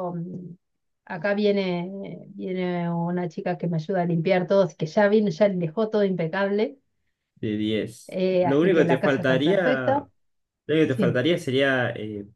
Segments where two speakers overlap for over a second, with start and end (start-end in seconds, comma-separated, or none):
8.1-9.6